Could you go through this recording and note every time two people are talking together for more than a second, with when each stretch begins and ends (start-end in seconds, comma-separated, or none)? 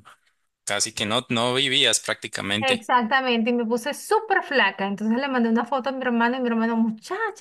none